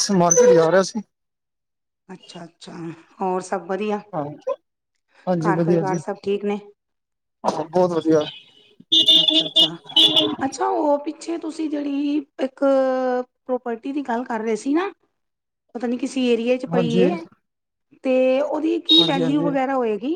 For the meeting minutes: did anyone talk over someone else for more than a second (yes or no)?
no